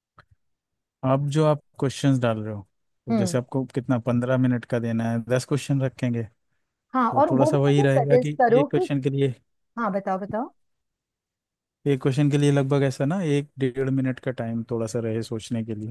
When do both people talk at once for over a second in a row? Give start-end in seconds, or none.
6.9-8.9